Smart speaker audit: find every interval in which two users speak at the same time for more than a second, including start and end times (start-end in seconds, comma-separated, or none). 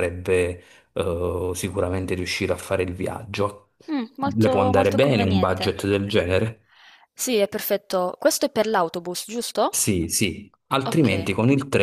4.4-5.7